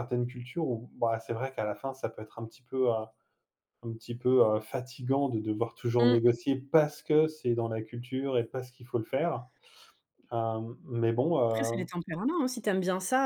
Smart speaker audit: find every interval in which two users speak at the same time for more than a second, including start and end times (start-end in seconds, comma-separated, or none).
none